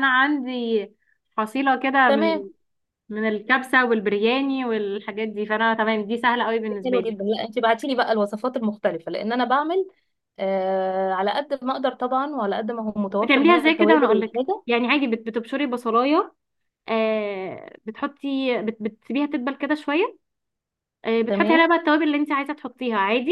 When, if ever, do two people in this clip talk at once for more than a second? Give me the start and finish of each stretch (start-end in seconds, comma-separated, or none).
13.2-14.6